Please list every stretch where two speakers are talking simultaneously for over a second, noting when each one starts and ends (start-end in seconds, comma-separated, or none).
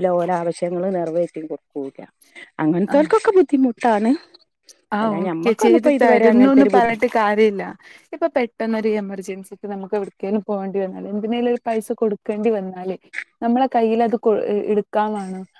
5.0-7.0